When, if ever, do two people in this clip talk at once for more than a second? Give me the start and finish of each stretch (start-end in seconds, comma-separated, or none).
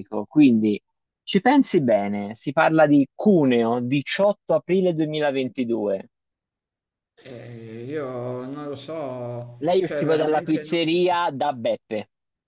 9.6-10.8